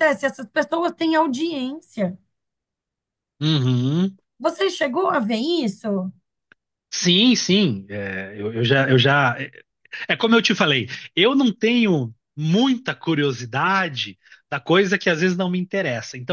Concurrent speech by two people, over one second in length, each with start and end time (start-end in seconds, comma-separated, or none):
none